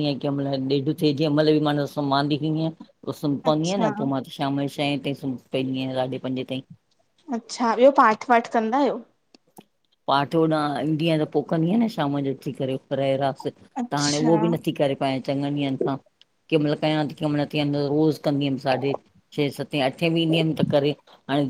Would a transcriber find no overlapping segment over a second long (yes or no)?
yes